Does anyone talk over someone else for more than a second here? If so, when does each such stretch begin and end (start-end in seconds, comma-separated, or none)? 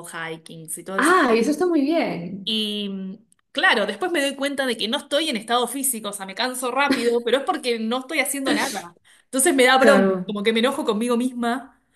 none